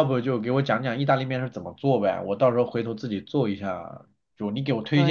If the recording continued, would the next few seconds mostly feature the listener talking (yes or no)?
no